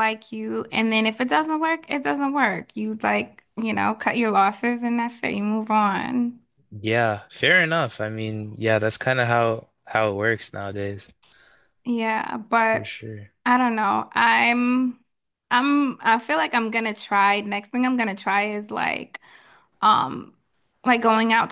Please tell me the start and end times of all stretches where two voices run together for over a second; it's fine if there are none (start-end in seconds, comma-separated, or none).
none